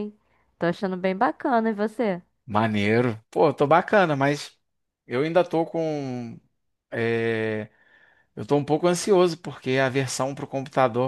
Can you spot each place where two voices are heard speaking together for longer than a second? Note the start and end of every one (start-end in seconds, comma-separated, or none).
none